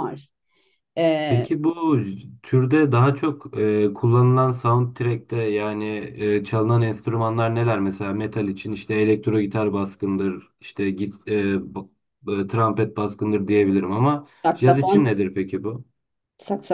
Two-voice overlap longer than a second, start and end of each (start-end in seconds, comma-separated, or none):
none